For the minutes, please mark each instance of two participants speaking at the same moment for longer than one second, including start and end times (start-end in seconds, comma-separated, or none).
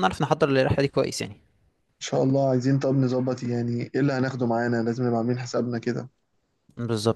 none